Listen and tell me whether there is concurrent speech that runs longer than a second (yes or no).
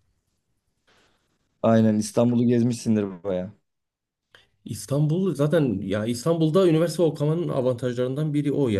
no